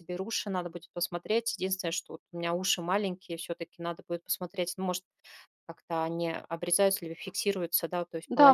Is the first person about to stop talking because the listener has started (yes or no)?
yes